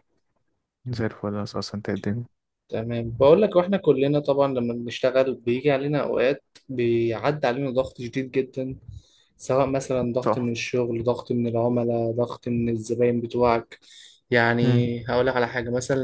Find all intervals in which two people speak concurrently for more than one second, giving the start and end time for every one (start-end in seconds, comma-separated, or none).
none